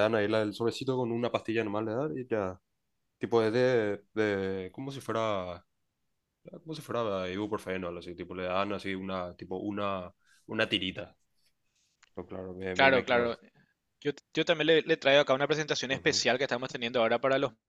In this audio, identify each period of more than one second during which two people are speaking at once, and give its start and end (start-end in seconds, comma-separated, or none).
none